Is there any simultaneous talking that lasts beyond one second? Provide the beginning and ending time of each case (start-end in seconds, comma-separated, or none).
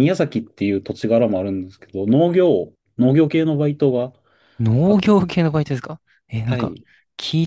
none